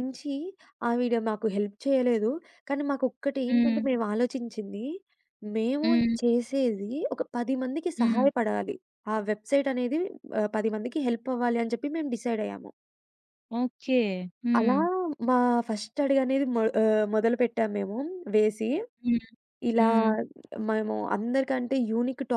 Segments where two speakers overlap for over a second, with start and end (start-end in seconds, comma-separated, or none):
none